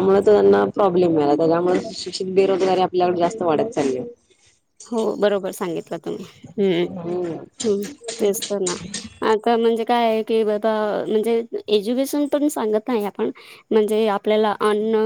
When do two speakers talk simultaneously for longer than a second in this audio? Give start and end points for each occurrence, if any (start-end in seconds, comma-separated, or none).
none